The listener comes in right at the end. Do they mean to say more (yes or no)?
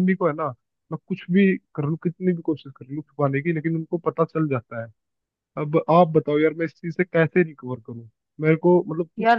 no